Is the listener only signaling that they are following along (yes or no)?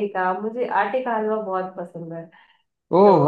no